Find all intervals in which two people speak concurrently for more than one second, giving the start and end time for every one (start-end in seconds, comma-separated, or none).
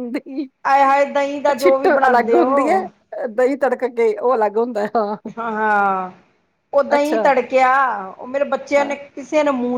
1.6-2.8